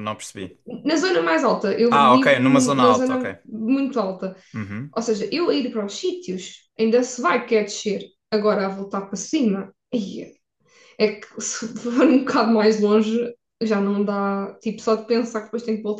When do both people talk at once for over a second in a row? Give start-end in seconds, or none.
1.9-3.2